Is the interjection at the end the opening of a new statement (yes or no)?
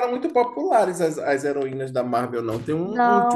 yes